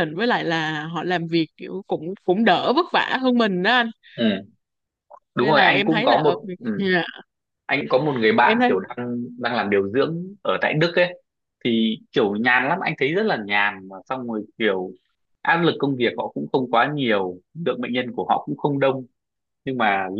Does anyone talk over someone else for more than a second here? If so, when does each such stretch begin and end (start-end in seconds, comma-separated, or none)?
5.4-6.9